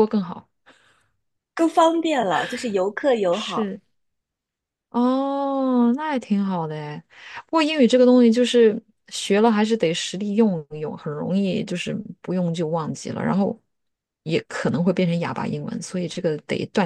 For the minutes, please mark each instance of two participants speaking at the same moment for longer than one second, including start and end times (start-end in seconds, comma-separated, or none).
none